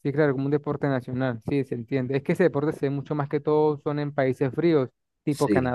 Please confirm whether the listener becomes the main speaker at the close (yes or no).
no